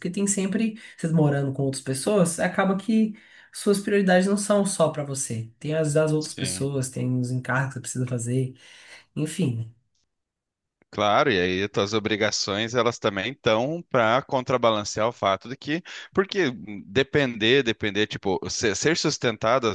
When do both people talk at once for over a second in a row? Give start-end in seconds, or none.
none